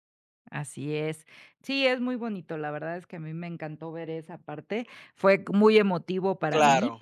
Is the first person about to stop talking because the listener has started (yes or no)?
no